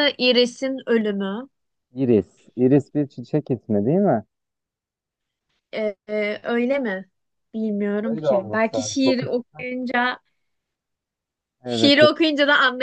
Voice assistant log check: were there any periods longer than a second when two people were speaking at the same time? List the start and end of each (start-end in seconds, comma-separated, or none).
8.0-9.4